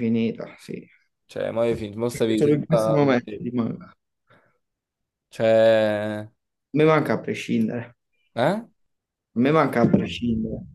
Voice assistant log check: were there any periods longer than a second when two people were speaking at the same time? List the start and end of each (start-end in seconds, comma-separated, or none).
2.1-3.5